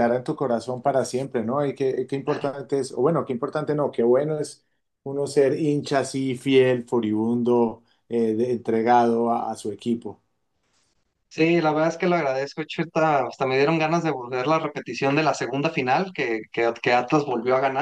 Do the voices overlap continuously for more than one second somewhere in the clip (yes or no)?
no